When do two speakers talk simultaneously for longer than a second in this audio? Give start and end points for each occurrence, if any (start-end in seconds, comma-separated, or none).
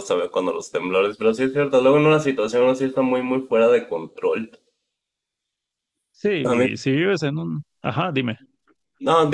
none